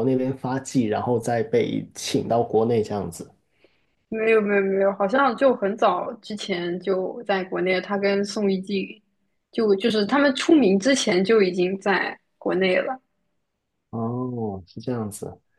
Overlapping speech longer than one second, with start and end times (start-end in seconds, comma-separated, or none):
none